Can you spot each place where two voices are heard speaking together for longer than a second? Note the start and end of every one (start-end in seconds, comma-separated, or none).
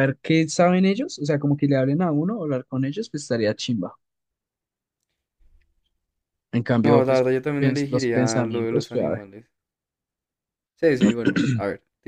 6.8-9.2